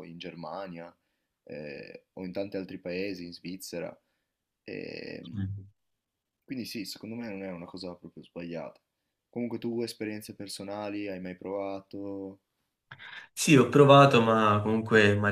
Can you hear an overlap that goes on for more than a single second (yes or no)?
no